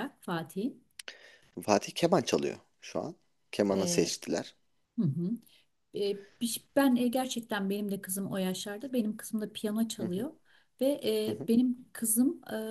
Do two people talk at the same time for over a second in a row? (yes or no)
no